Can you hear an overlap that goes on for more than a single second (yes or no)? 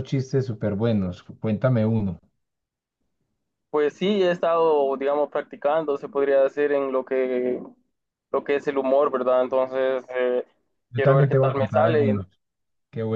yes